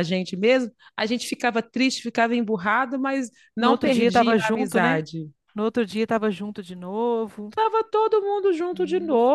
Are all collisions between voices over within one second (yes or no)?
no